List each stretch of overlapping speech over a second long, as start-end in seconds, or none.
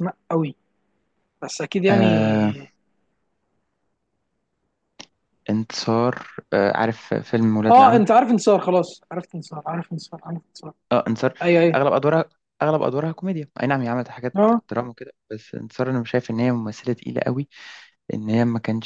none